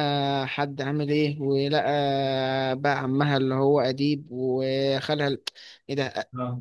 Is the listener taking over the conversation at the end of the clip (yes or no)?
no